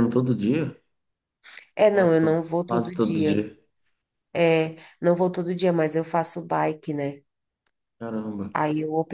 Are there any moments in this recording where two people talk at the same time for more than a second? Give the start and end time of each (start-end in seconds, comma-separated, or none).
1.9-3.4